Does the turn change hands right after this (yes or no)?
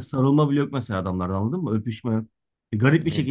no